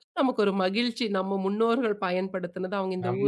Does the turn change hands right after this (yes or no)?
yes